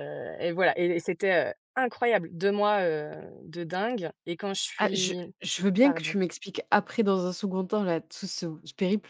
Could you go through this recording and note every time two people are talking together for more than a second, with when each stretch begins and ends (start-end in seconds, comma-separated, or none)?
none